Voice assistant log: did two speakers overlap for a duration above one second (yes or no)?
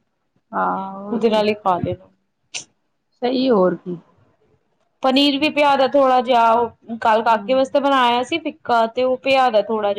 no